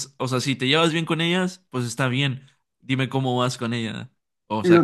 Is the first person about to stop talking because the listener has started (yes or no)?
yes